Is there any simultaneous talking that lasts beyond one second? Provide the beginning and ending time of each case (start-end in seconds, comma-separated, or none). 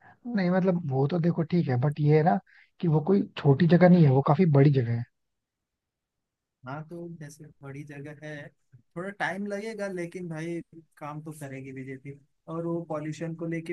none